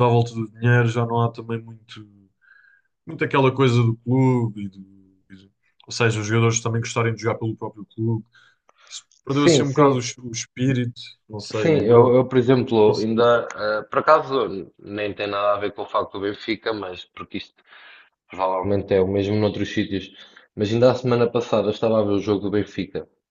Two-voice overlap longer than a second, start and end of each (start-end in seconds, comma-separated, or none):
11.5-13.2